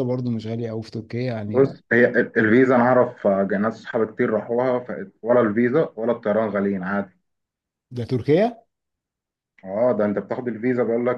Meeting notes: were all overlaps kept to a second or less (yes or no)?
yes